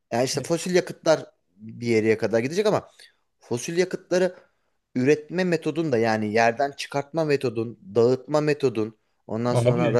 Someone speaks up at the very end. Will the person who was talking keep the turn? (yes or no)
yes